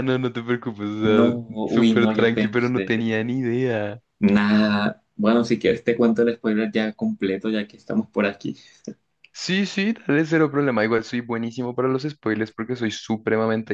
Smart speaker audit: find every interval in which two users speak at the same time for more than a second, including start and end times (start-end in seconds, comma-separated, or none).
1.0-3.1